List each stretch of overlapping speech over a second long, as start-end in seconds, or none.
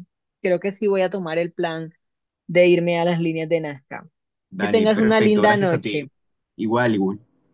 4.6-6.1